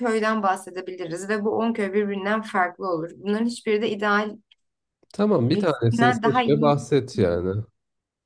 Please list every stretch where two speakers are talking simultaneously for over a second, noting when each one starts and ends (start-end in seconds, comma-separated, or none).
5.4-6.8